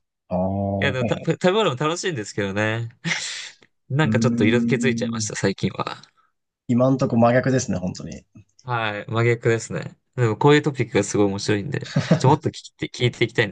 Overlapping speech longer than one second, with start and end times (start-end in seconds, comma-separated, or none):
4.0-5.3